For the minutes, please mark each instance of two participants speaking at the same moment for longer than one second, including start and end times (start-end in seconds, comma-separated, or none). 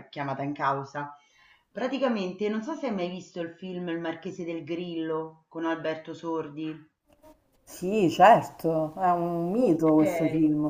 none